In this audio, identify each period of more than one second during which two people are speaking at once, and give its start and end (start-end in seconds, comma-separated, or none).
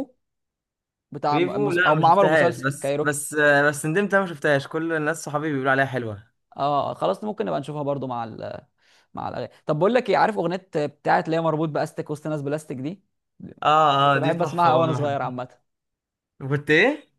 1.3-3.2, 14.0-15.3